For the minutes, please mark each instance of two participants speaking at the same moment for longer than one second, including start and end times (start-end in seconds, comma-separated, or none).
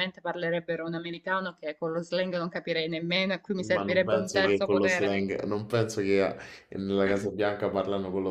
3.5-5.2